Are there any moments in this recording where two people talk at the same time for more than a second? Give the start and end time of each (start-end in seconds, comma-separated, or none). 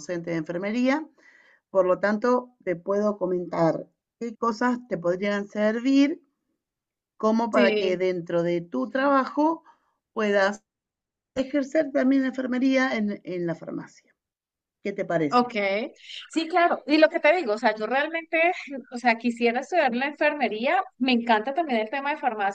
none